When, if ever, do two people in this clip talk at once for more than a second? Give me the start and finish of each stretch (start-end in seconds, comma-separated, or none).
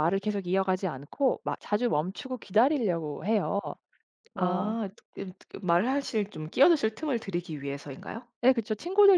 none